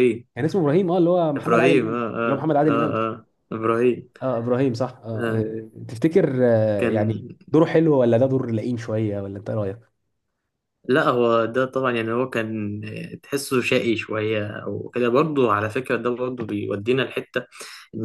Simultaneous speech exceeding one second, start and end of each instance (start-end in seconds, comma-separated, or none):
1.4-3.0